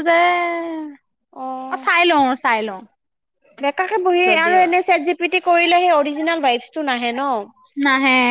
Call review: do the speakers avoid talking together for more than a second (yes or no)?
yes